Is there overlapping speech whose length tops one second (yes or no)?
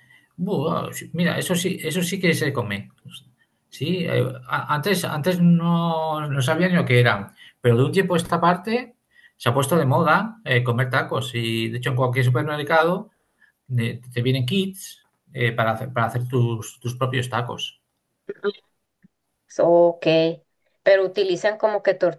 no